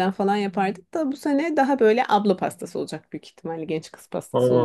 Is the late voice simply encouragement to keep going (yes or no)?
no